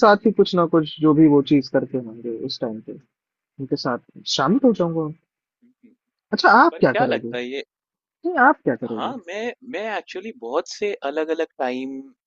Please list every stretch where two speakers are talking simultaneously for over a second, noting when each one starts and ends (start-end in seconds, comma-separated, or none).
none